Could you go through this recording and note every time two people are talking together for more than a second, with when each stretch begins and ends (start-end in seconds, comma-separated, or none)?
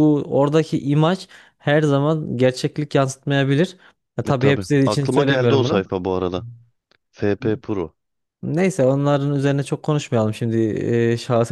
4.3-5.8